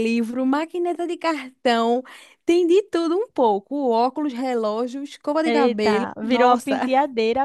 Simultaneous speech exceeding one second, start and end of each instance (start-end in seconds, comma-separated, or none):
5.4-6.8